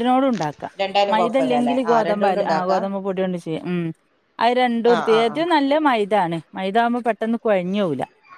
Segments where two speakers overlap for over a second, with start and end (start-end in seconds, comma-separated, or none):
1.1-2.8